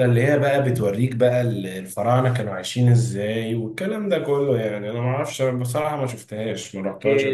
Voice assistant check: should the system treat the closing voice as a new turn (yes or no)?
yes